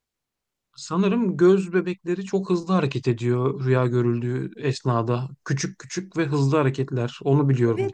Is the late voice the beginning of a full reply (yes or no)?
yes